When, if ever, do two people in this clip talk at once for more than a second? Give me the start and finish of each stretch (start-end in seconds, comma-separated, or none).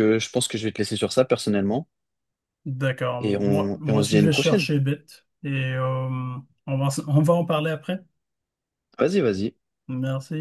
3.2-4.7